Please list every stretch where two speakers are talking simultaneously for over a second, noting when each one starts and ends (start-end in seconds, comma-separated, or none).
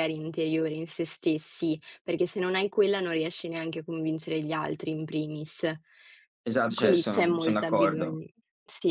6.7-8.2